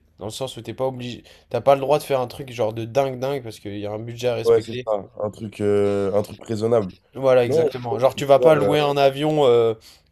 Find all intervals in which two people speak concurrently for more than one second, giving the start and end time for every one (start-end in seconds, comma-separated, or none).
7.4-8.8